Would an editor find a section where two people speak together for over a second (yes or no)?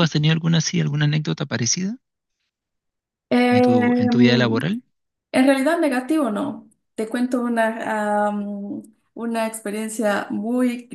yes